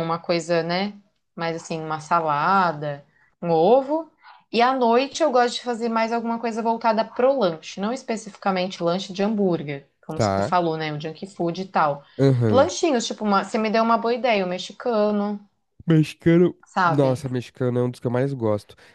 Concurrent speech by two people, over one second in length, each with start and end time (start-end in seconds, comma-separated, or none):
none